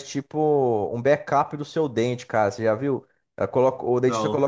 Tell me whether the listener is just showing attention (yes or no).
yes